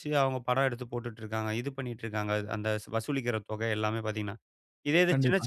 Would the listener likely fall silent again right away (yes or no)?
yes